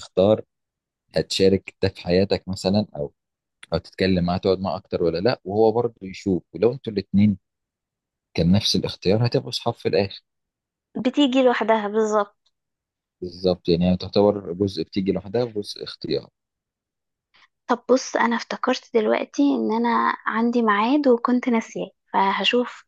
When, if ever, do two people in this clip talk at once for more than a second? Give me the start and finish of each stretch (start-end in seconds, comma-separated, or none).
none